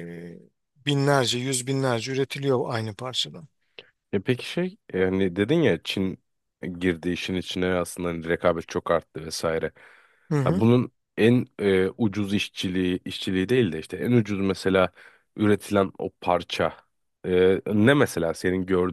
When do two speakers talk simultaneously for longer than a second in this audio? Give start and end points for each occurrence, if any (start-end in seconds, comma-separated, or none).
none